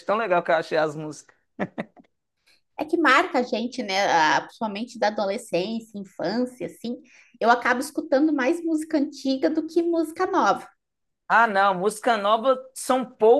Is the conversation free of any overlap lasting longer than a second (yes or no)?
yes